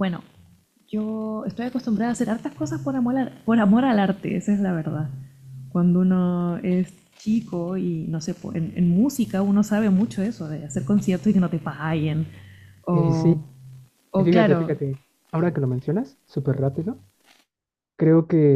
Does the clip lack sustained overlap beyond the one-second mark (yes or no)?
yes